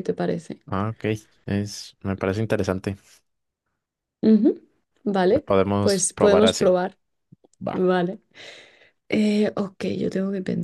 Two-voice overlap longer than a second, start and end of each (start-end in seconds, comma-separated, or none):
5.3-6.8